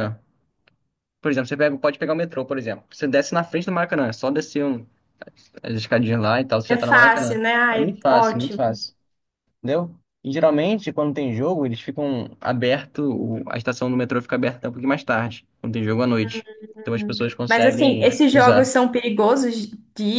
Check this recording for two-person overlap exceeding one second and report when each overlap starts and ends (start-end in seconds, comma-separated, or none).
6.7-8.8, 16.9-18.7